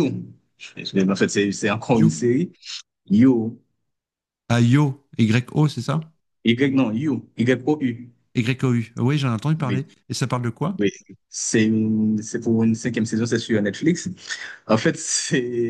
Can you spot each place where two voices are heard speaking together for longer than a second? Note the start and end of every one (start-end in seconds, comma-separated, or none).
none